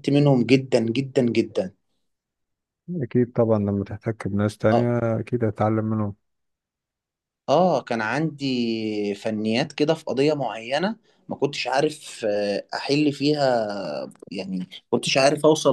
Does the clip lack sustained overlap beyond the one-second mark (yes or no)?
yes